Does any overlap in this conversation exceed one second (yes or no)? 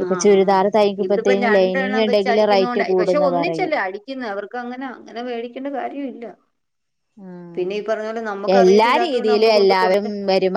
yes